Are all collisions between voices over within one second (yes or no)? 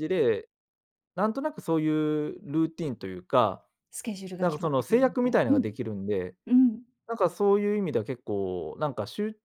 no